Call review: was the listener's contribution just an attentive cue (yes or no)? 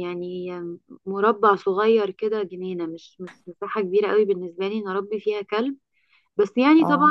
yes